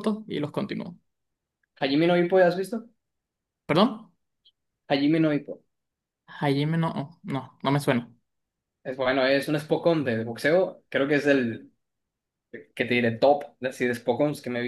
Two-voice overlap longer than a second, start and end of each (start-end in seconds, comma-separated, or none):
none